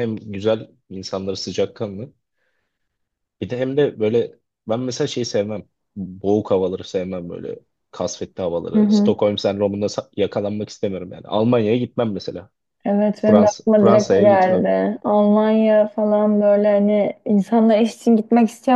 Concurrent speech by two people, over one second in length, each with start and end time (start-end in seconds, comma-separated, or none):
13.2-14.6